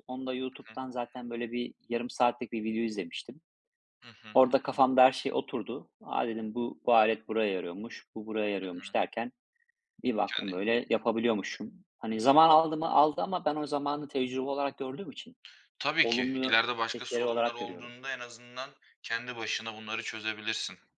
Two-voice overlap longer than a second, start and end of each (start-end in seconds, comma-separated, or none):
16.0-17.9